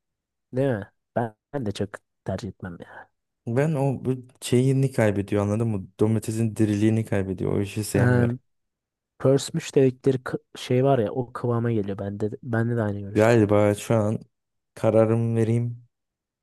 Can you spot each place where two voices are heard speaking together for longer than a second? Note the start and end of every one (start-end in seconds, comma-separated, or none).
none